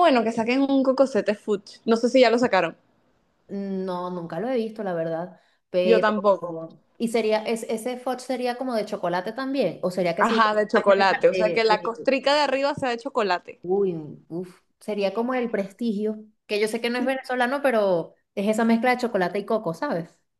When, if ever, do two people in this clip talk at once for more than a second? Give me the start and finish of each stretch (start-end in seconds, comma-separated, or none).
10.2-12.1